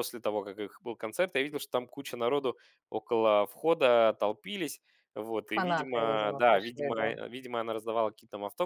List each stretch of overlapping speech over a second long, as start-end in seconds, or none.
5.5-7.1